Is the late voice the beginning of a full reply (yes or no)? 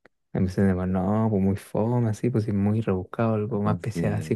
no